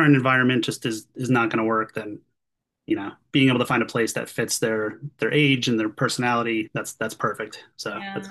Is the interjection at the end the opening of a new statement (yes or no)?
yes